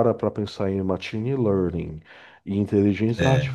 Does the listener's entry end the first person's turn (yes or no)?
no